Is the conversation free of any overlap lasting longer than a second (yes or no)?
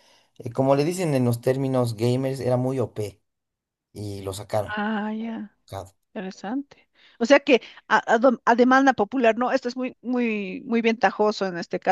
yes